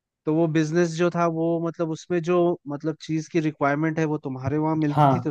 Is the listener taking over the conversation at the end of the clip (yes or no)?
no